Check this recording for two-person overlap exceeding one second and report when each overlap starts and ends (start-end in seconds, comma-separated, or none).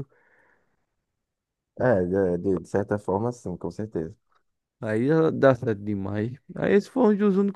none